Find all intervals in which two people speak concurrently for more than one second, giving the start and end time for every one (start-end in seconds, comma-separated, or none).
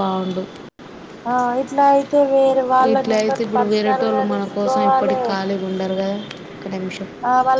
2.9-5.2